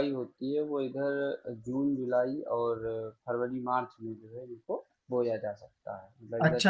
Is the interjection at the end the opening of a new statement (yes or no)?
yes